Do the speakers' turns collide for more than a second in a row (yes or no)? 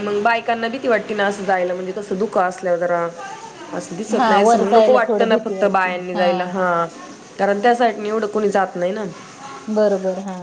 yes